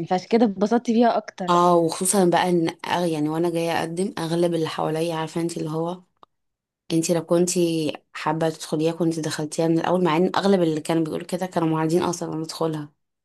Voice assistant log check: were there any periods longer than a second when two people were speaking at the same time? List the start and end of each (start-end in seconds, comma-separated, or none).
none